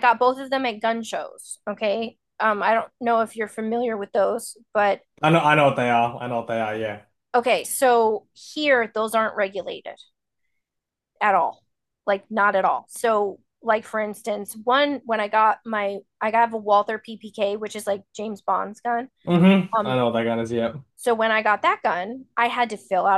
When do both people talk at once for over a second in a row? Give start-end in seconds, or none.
none